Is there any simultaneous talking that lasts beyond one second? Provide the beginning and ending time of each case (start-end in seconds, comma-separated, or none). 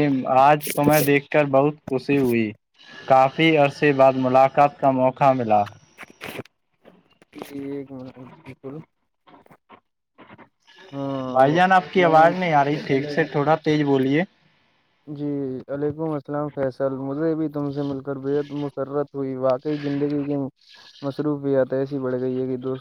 11.4-13.4